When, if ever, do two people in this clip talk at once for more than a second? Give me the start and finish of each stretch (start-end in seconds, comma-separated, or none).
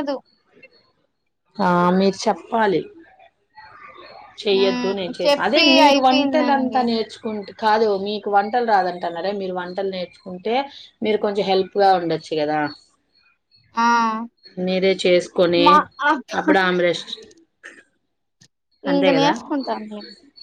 4.6-6.8